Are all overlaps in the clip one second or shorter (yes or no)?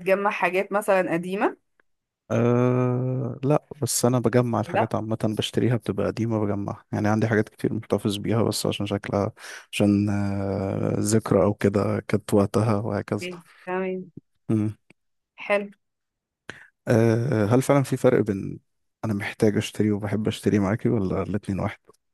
yes